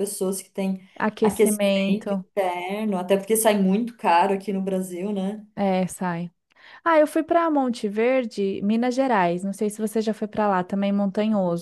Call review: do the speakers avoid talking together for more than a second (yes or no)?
no